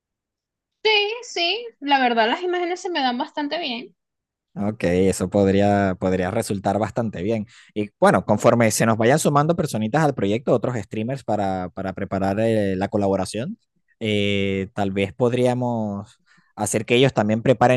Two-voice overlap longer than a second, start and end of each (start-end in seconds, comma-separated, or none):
none